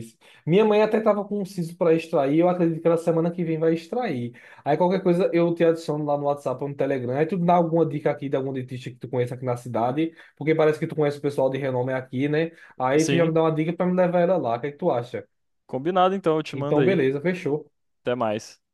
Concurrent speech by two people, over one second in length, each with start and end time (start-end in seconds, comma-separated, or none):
none